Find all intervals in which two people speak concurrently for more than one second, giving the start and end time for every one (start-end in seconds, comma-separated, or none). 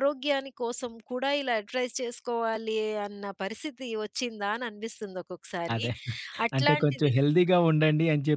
none